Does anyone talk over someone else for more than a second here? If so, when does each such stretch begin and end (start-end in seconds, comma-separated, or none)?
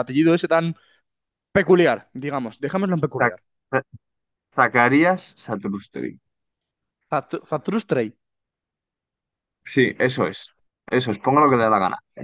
none